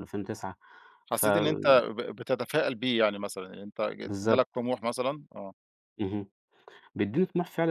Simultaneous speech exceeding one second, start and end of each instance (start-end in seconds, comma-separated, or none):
none